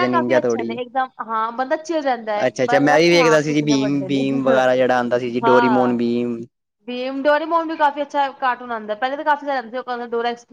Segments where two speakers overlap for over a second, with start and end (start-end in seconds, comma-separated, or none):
2.5-4.2